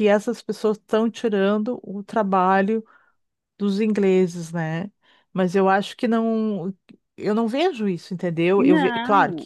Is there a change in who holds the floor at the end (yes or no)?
no